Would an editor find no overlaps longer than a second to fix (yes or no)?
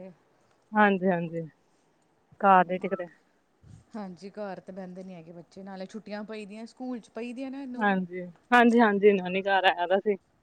yes